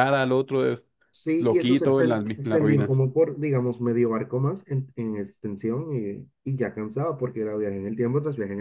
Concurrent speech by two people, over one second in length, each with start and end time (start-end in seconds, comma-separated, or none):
1.4-3.0